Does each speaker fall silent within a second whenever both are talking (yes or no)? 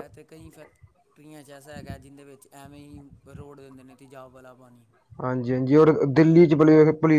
yes